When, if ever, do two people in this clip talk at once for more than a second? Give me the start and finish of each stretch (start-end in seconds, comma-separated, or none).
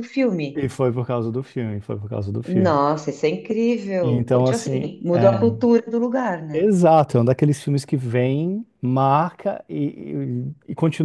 4.0-5.4